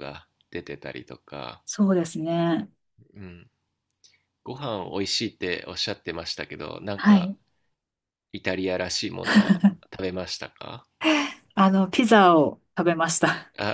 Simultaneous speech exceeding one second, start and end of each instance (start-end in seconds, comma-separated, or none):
none